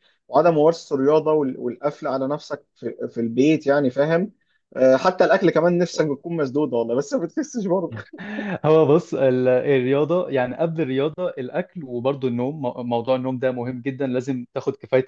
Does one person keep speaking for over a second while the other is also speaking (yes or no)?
no